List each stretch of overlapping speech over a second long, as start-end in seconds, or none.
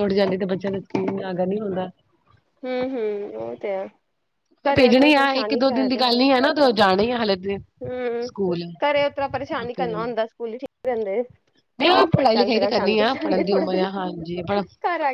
12.3-13.9